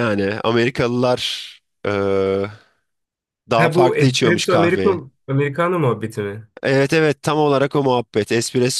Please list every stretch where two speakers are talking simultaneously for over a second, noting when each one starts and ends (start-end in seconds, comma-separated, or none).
3.6-5.0